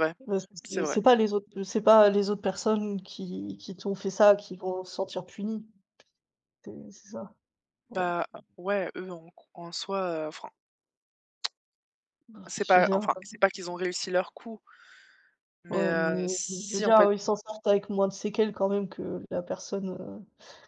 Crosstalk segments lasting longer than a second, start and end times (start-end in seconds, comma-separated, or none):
15.7-17.1